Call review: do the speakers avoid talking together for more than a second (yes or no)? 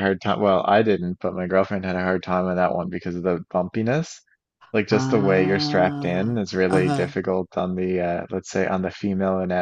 no